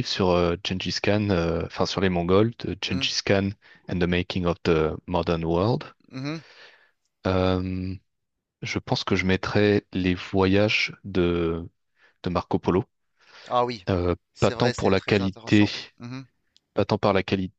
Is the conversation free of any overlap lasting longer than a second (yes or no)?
no